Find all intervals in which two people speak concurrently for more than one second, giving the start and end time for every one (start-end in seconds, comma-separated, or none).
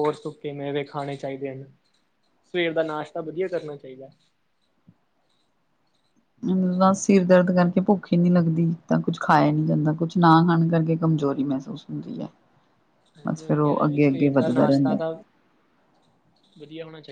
13.3-14.9